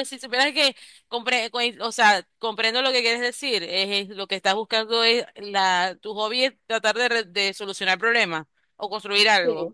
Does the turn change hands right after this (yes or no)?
no